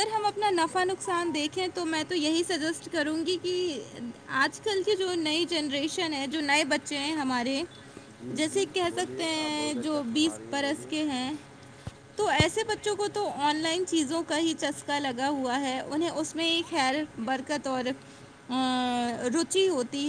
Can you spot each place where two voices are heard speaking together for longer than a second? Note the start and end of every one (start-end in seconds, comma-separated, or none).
8.4-10.9